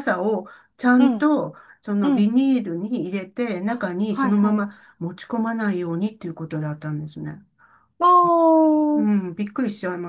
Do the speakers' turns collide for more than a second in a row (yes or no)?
no